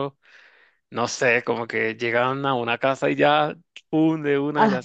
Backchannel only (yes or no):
no